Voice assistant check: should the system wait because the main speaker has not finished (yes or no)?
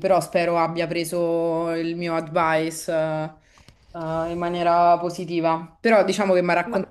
yes